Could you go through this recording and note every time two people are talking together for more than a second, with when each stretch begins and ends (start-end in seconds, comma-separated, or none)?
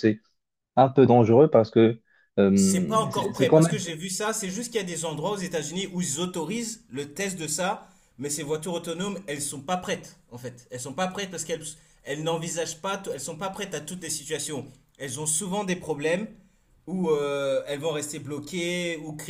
2.5-3.8